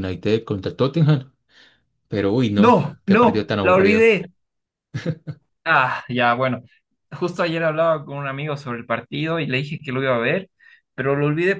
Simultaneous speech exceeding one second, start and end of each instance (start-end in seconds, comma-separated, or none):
2.6-4.1